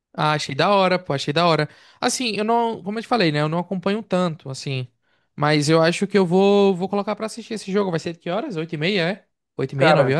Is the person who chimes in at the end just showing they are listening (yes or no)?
no